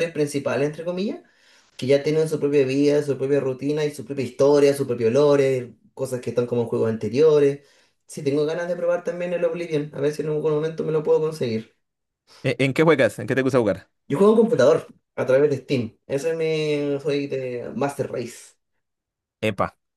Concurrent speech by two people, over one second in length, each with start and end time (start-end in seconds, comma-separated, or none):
none